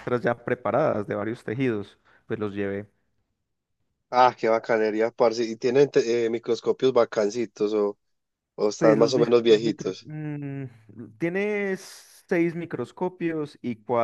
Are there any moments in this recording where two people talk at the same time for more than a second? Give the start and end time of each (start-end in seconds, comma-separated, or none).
8.8-10.1